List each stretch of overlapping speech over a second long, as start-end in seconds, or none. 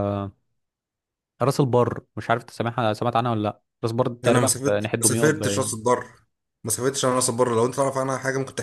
4.2-5.7